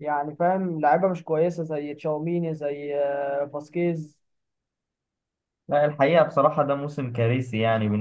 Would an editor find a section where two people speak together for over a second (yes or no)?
no